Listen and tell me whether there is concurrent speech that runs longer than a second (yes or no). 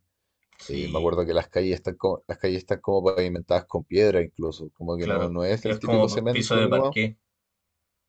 yes